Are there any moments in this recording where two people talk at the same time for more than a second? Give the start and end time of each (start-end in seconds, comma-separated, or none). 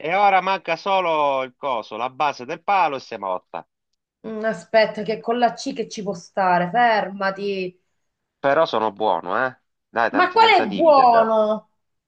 10.1-11.4